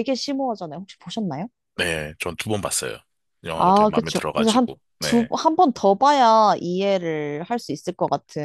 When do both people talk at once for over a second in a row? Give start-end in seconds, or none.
3.5-5.3